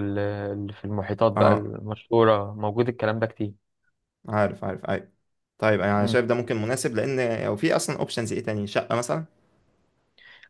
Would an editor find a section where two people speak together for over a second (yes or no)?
no